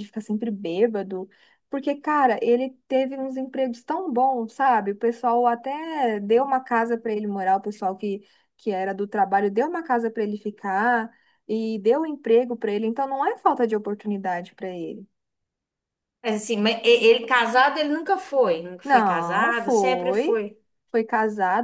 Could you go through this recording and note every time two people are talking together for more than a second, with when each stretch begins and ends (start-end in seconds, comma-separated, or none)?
18.8-20.4